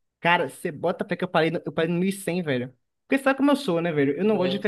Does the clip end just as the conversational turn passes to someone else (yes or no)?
no